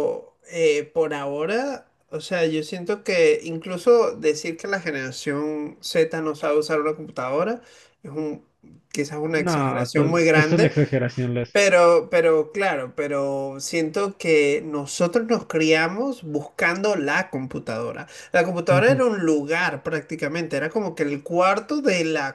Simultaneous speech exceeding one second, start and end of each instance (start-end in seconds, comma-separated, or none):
9.3-10.7